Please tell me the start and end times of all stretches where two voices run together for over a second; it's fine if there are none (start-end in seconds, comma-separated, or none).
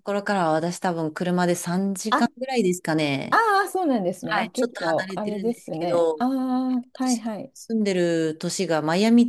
4.2-6.2